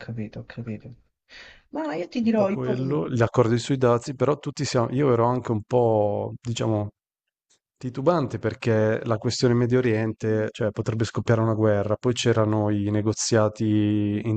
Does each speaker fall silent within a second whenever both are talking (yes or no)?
yes